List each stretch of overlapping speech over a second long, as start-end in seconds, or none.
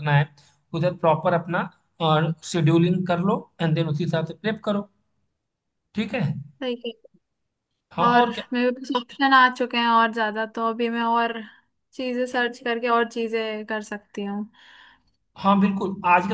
none